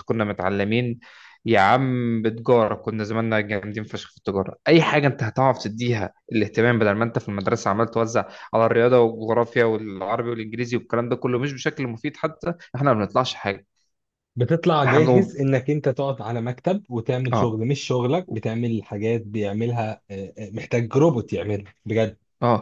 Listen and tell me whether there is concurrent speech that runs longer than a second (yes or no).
no